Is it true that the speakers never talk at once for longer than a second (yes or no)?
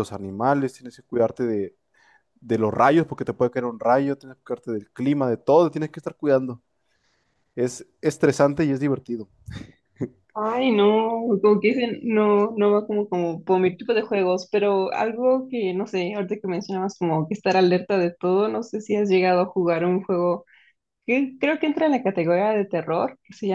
yes